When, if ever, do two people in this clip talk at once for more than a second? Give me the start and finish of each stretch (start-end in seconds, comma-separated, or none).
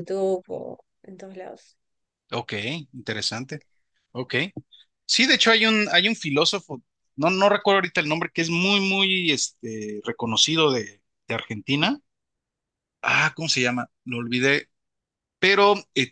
none